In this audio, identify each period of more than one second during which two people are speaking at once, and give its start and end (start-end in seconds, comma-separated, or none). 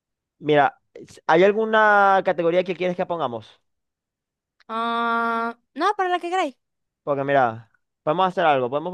none